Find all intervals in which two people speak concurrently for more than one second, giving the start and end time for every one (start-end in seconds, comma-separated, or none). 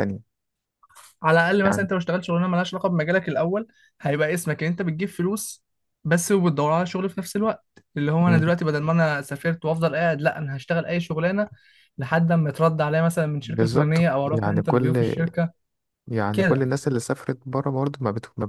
13.4-15.1